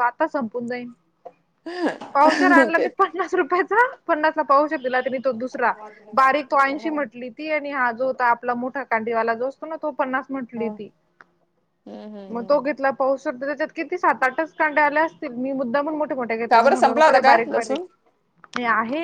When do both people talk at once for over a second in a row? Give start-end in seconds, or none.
16.5-17.8